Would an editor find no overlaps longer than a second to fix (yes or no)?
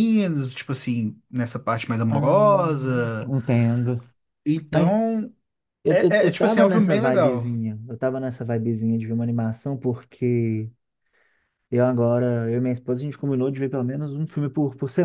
no